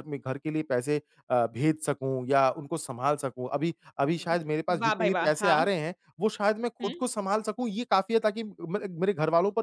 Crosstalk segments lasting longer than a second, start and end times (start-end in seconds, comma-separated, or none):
4.2-5.7